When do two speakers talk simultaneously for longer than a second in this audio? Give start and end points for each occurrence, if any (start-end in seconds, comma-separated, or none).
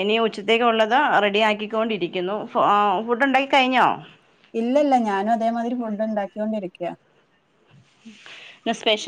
none